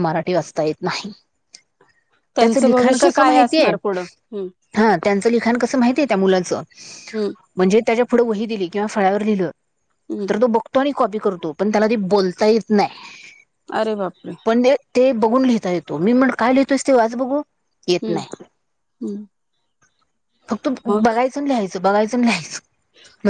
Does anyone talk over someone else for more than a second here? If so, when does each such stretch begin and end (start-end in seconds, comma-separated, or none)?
2.4-3.7